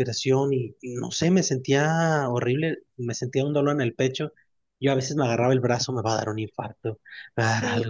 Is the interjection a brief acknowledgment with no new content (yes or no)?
yes